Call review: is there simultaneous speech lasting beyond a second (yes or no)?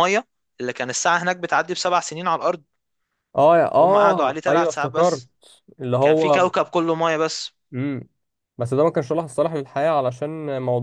yes